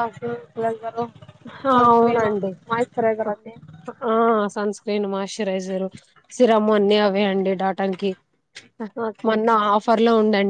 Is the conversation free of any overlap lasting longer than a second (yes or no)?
yes